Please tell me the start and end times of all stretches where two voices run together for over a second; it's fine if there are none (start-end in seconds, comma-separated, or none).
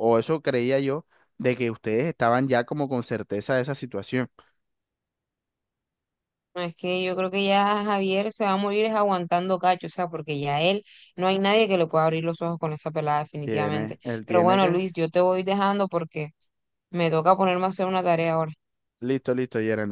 13.4-14.8